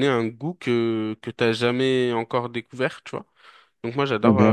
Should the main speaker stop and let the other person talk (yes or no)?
yes